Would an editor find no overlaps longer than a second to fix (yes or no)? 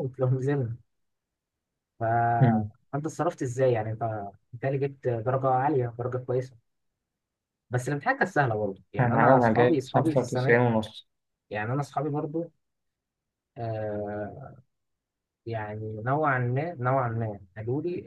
no